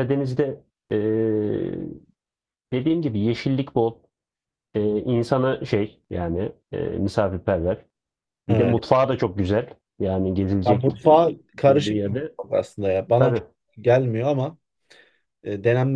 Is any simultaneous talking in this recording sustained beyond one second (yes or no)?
yes